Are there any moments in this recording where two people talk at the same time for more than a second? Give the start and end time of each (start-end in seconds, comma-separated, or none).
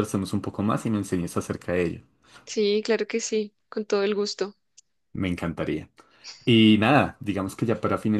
none